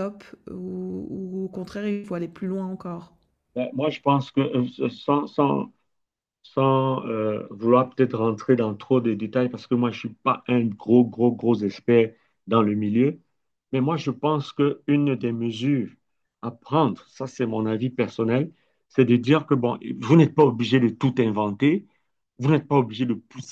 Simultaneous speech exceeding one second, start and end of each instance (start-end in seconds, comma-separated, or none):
none